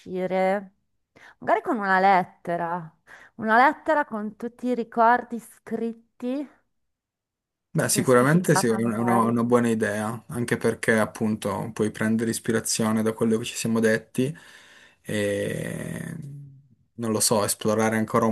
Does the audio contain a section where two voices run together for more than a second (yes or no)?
yes